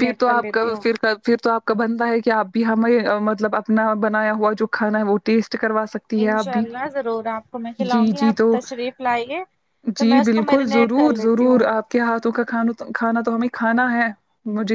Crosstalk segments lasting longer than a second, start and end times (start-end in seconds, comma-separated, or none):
10.0-11.6